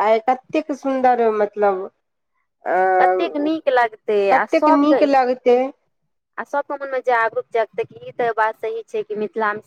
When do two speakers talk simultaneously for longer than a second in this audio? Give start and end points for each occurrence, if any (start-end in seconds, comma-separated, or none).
none